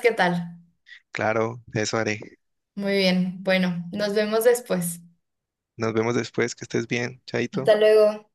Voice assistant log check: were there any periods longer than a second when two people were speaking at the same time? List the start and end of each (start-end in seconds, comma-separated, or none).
none